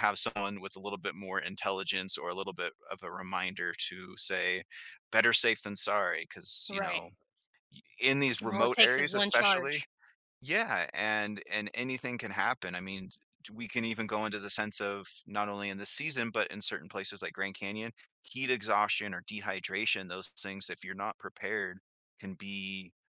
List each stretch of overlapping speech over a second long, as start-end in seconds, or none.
8.5-9.8